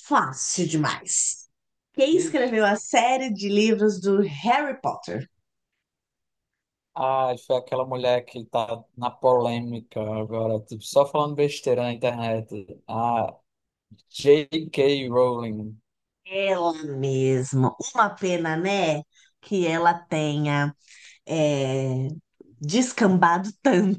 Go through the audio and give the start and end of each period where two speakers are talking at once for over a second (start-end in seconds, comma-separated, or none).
none